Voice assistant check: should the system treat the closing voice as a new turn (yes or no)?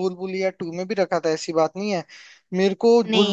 no